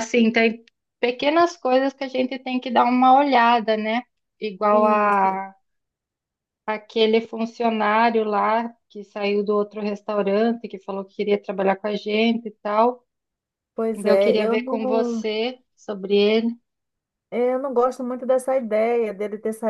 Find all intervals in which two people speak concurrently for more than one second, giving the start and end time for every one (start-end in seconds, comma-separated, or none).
13.9-15.2